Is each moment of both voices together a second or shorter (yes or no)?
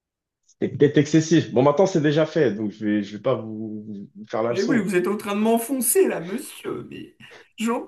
yes